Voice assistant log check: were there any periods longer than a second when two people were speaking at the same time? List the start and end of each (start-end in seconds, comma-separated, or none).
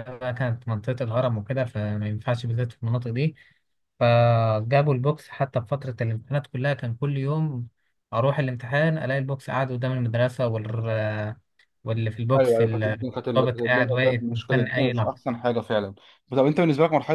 12.4-15.2